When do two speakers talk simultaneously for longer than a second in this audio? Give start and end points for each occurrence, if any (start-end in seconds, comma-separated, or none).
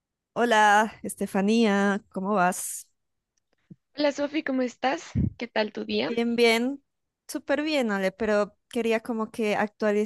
none